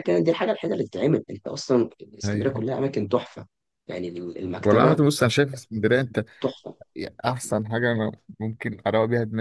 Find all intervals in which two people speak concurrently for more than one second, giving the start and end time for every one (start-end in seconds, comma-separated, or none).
none